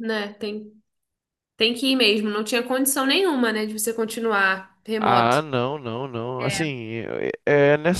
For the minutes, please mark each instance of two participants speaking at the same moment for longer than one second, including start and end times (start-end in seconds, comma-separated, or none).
none